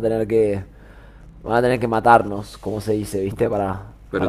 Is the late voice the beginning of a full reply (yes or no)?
yes